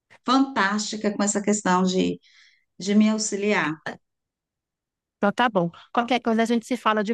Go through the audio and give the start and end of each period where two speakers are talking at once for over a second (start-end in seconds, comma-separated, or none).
none